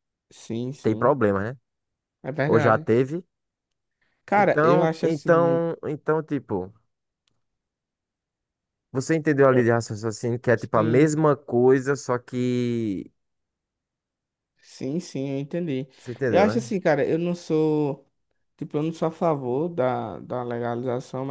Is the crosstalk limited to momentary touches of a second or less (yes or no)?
no